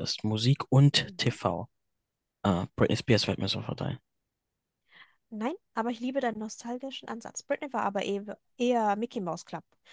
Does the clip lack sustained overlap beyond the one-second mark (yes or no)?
yes